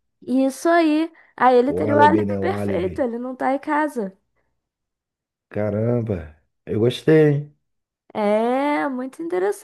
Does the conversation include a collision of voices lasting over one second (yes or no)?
yes